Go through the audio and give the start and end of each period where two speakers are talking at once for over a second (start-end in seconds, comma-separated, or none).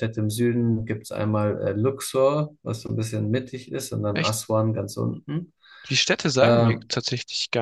none